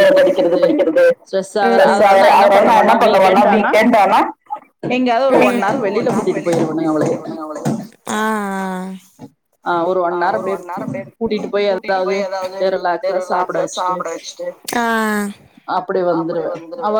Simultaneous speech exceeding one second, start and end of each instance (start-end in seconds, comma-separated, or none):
1.8-3.7, 5.4-7.3